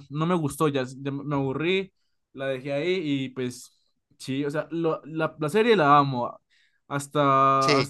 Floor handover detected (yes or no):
no